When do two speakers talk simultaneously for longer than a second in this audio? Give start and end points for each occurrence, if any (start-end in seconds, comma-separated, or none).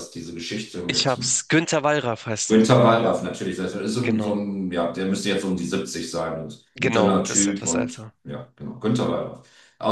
6.8-8.1